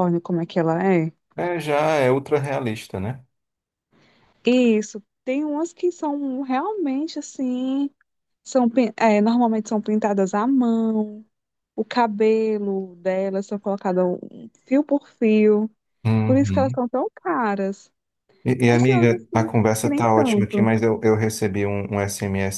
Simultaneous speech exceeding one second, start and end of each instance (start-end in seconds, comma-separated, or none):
18.7-20.7